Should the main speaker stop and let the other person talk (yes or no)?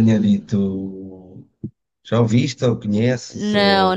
yes